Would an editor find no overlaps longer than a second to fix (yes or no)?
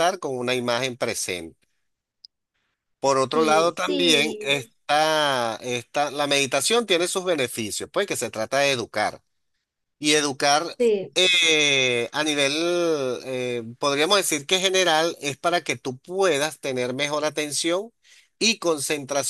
no